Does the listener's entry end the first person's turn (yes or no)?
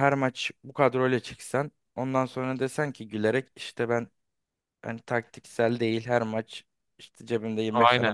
no